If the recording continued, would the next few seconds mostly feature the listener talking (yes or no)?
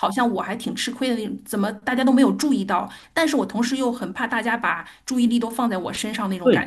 yes